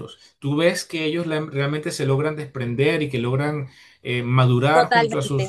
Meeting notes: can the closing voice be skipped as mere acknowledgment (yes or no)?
no